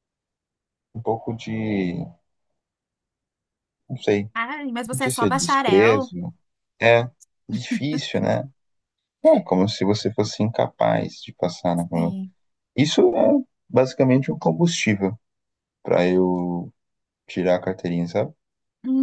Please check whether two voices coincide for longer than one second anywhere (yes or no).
yes